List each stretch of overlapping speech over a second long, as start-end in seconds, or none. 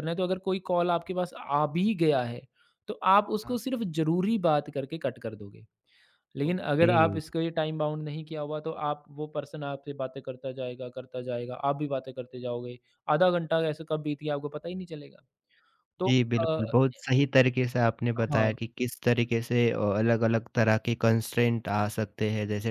none